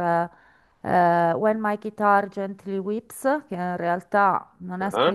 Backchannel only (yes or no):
yes